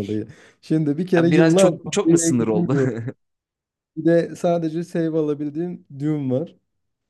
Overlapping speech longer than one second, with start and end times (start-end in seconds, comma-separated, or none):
1.2-2.8